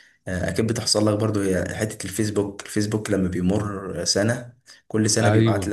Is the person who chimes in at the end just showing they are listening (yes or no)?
yes